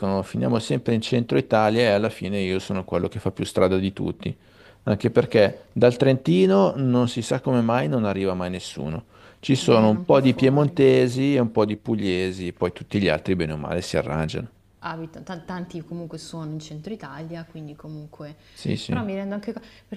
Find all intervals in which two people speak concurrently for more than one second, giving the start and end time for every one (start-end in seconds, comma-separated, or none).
9.6-10.8